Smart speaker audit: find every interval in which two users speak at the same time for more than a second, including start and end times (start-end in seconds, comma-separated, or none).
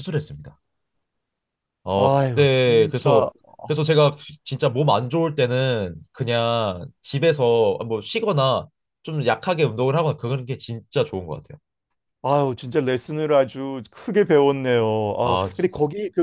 1.9-3.3